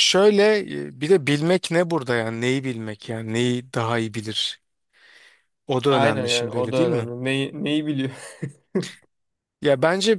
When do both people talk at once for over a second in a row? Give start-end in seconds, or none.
5.9-7.1